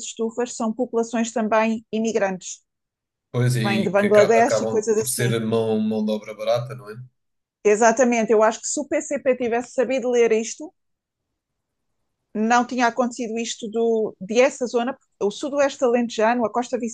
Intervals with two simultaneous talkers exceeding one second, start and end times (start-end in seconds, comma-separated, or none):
3.5-5.4